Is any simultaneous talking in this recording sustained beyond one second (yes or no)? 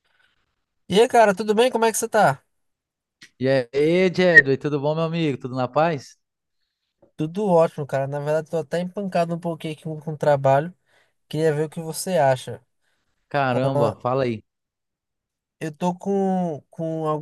no